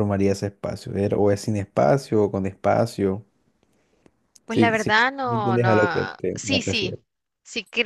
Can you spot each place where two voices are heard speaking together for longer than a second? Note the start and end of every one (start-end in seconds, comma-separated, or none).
4.5-7.0